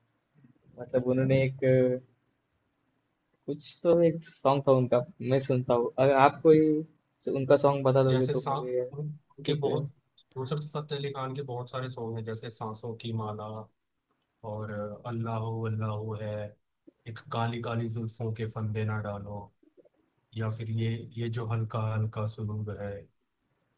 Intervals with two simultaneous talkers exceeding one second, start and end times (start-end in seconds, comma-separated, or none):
8.1-9.8